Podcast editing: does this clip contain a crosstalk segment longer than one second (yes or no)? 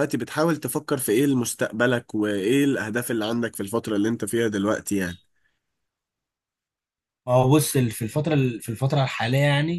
no